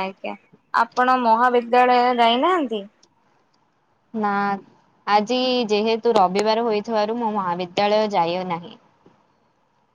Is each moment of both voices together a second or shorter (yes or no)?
yes